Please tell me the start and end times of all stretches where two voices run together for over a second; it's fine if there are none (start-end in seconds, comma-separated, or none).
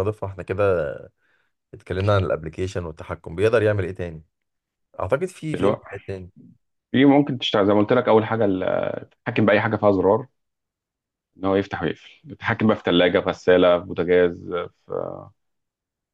none